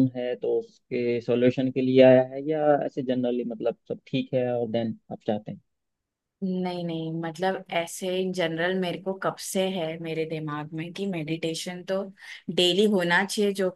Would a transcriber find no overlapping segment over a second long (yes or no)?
yes